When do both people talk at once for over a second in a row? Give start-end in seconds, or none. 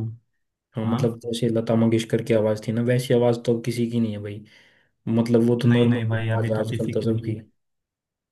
5.6-7.3